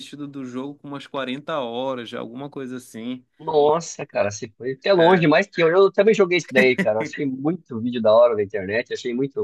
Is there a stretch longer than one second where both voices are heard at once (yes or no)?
no